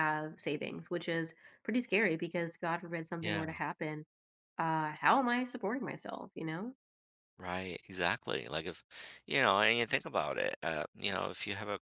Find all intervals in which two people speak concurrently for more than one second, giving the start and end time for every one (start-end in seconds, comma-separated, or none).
none